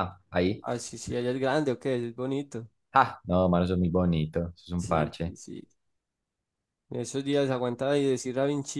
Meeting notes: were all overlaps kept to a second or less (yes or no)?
yes